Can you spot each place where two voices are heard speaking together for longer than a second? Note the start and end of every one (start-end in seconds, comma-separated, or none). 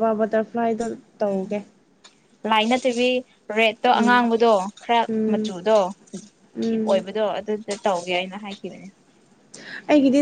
none